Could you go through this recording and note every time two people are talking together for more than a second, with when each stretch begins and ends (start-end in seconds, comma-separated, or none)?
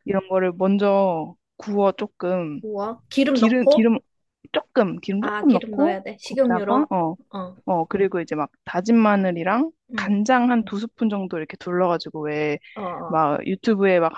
5.2-6.9